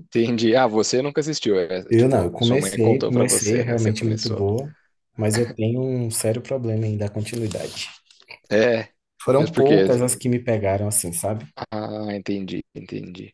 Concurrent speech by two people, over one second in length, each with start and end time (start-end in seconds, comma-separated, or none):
1.9-4.5